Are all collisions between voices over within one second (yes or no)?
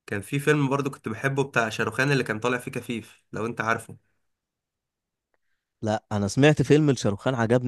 yes